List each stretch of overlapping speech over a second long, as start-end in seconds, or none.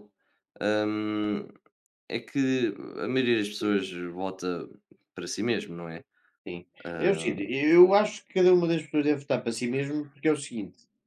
none